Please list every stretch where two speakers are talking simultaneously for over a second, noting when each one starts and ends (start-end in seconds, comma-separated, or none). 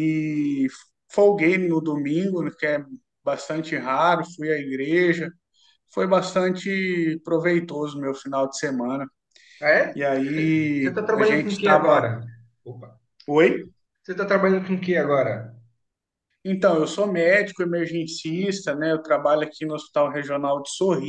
10.8-12.1